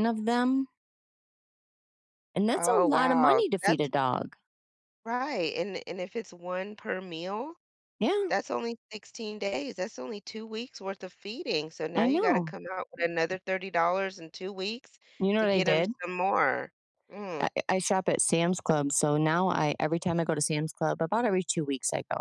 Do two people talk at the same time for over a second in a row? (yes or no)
yes